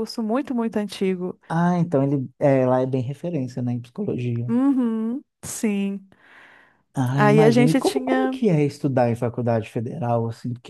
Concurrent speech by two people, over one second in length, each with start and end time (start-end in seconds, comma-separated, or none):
7.1-8.4